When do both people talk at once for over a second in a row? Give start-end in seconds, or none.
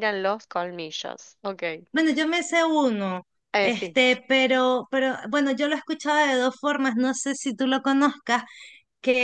none